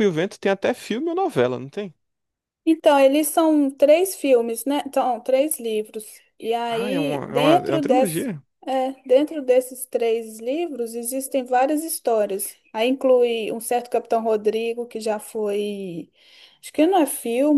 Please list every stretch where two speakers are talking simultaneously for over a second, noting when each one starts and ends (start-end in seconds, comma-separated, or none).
6.7-8.3